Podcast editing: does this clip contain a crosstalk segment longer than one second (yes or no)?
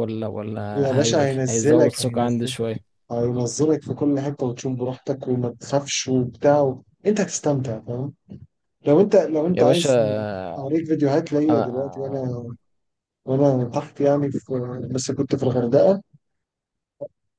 yes